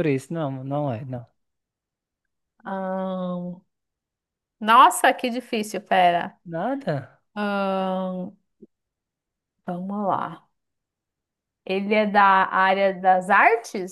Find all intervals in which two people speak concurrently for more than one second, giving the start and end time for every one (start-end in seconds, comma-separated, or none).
none